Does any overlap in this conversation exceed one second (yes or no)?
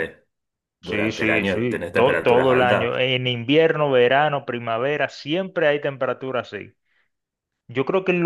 yes